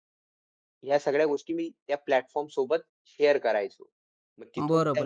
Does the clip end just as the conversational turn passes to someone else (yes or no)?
yes